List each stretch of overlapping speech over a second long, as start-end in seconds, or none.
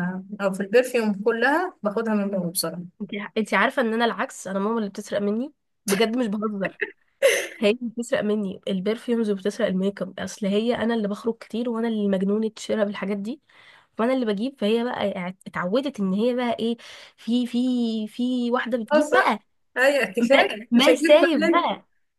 20.2-21.7